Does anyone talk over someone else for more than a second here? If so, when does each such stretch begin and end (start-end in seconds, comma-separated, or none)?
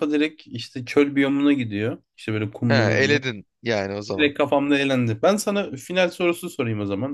none